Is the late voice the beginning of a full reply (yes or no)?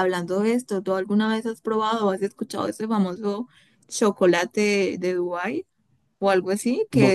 no